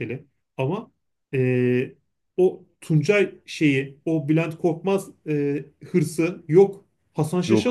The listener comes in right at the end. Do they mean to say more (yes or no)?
no